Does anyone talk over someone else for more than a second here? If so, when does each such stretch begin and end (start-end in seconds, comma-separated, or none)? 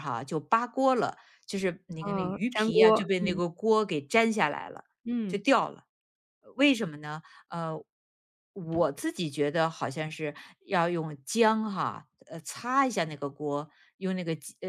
2.0-3.4